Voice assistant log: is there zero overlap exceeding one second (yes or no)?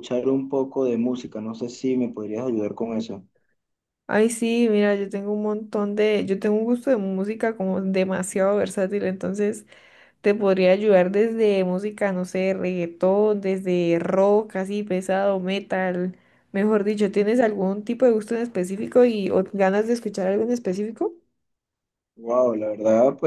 yes